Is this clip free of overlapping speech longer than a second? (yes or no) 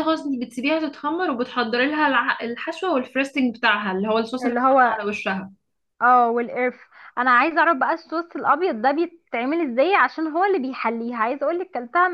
yes